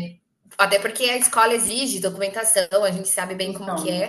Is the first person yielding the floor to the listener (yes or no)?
yes